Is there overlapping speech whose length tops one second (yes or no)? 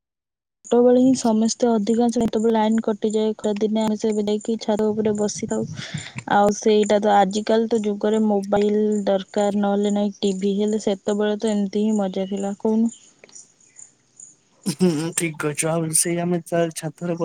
no